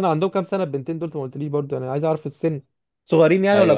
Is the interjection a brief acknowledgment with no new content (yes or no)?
no